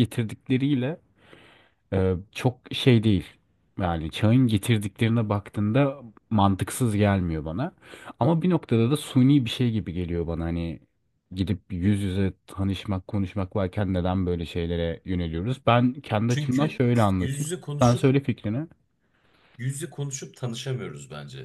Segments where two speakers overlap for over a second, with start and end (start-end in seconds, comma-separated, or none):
16.3-18.1